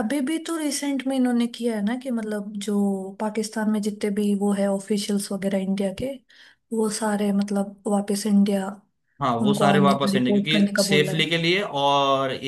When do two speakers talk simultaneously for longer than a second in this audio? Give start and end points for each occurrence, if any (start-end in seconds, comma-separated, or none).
9.4-11.3